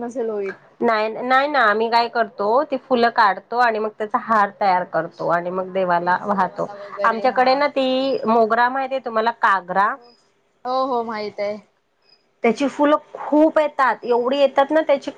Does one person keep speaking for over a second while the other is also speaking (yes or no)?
no